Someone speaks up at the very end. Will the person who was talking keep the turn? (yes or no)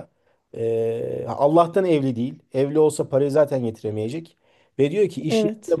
yes